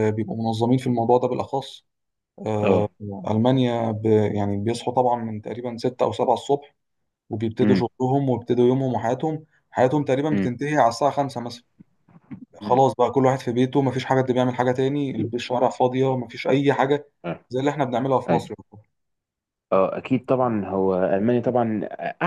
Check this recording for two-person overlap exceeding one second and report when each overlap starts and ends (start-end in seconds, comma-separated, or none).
none